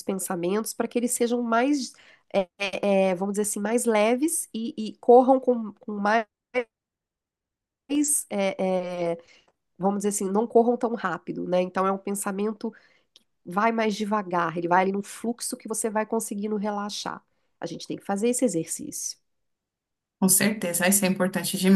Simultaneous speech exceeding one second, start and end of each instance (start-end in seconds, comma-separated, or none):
none